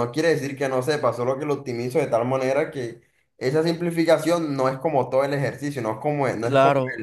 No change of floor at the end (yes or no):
no